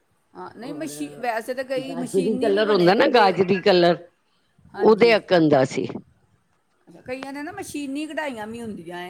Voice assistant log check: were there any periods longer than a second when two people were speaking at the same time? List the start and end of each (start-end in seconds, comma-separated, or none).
1.9-3.3